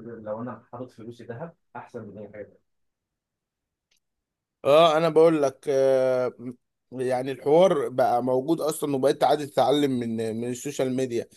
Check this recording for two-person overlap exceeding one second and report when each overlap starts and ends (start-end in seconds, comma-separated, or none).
none